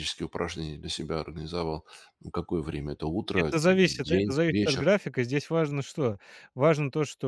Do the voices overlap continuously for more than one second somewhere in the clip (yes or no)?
yes